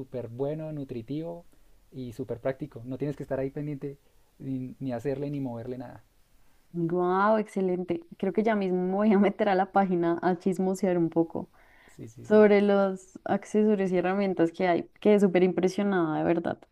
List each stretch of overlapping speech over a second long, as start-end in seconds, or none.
none